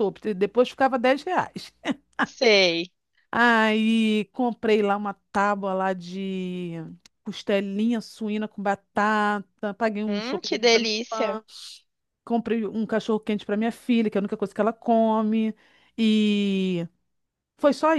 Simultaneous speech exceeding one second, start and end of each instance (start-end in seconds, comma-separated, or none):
10.1-11.4